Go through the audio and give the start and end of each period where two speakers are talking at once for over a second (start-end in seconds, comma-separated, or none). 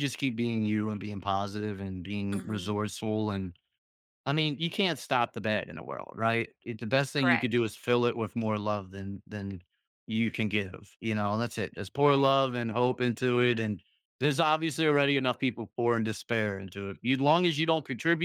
none